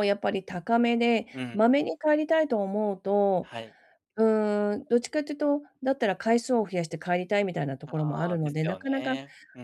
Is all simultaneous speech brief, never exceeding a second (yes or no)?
no